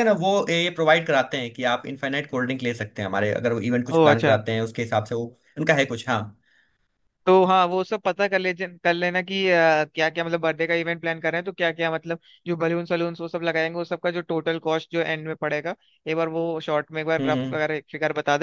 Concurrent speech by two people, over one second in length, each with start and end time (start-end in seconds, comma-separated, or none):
none